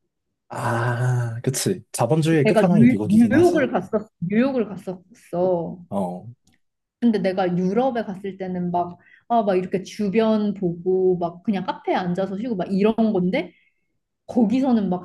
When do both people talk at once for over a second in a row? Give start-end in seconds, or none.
2.4-3.7